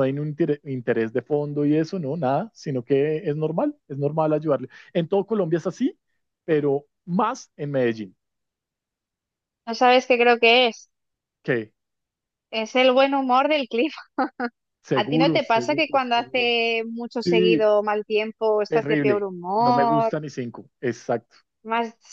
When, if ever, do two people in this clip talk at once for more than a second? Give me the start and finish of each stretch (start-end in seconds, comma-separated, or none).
14.9-16.5, 18.7-20.1